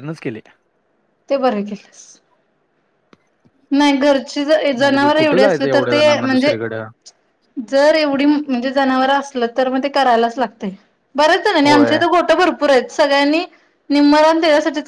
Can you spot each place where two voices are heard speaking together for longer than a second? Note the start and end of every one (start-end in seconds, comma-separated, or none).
4.8-6.5